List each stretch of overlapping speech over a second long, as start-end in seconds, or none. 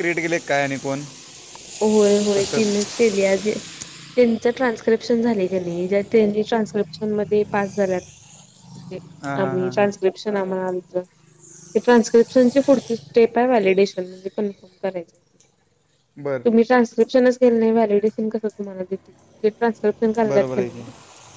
none